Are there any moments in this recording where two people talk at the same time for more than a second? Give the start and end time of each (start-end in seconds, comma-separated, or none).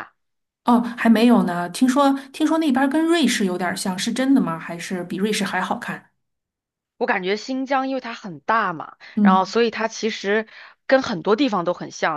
none